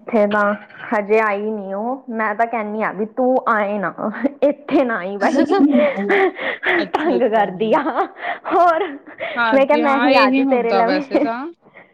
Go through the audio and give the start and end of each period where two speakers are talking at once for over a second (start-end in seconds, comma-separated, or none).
9.5-11.1